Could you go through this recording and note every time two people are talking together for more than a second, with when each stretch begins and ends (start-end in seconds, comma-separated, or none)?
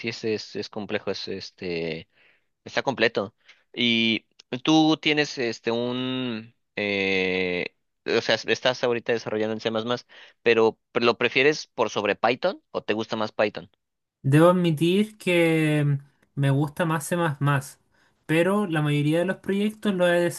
none